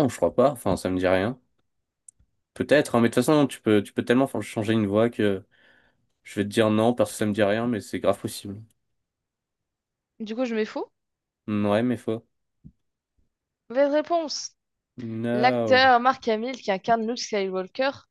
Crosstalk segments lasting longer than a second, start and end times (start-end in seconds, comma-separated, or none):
none